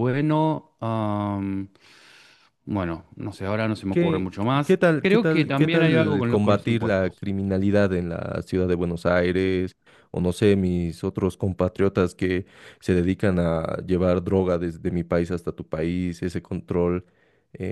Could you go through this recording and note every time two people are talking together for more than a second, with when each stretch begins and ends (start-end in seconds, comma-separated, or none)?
3.9-7.2